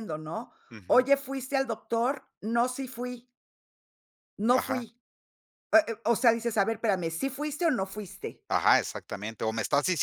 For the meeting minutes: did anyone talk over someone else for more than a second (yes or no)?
no